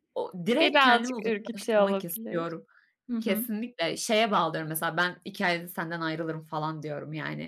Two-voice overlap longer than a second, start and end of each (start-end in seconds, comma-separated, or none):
0.5-2.5